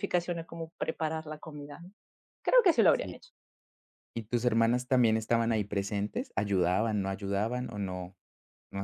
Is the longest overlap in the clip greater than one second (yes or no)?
no